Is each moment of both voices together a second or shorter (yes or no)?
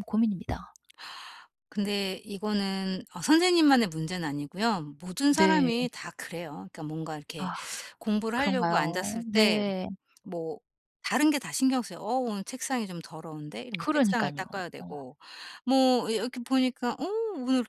no